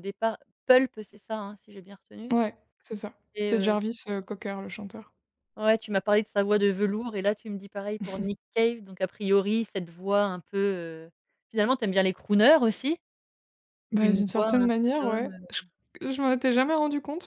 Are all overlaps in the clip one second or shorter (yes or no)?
no